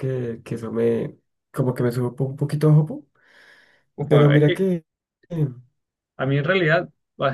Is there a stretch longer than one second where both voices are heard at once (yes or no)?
no